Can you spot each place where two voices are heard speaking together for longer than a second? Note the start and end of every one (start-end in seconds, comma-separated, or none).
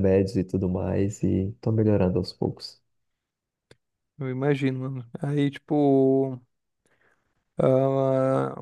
none